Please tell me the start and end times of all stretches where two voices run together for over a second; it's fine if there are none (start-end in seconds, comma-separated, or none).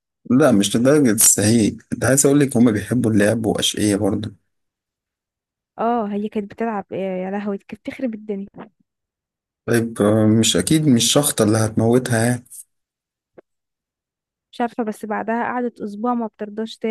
none